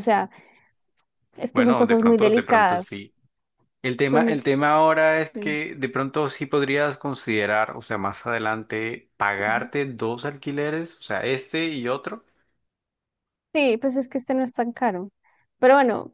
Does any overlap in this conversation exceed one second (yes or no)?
yes